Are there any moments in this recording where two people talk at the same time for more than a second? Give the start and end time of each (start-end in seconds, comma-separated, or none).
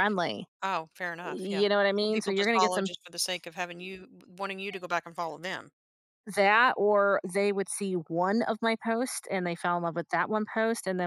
1.3-2.9